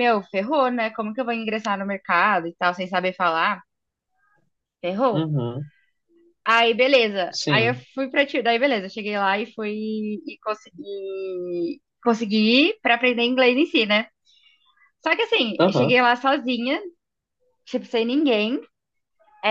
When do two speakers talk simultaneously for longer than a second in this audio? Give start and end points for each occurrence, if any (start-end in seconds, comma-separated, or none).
none